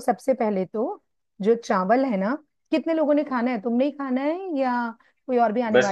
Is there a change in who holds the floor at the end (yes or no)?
yes